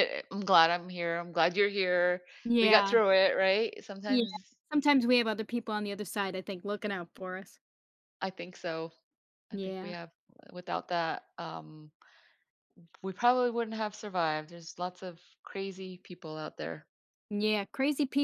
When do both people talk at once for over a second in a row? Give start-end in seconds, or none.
none